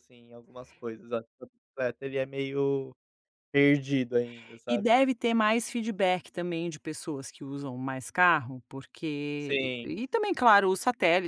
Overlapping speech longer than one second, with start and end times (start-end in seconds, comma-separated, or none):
none